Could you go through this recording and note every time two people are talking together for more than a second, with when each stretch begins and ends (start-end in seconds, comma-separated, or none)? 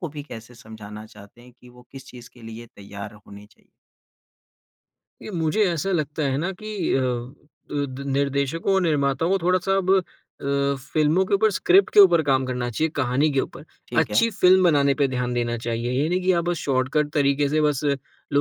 none